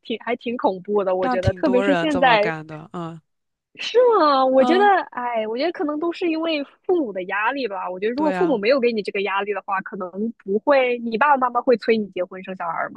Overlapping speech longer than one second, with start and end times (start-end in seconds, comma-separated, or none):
1.2-2.5